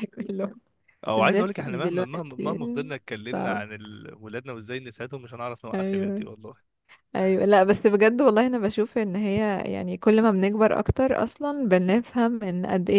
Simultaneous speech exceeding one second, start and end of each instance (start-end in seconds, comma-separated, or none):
1.2-2.6